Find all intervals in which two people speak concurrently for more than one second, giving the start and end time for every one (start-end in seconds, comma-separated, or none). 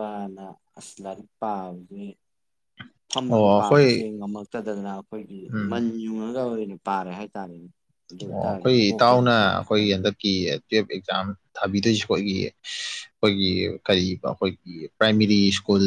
8.3-10.1